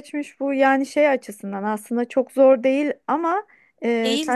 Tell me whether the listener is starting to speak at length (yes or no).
no